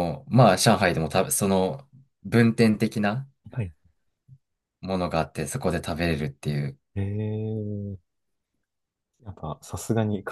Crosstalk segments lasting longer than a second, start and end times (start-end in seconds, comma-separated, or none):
none